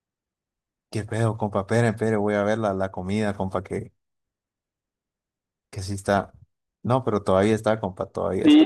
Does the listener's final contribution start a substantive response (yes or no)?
yes